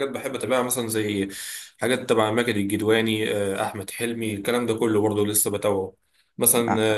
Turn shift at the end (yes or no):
no